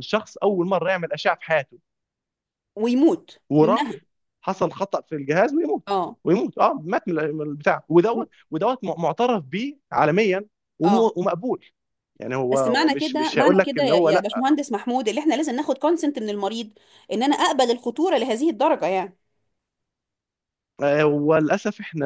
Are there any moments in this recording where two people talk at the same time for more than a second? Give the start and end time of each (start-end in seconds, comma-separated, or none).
12.5-14.1